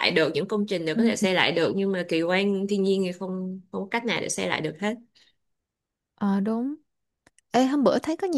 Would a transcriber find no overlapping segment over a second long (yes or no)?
yes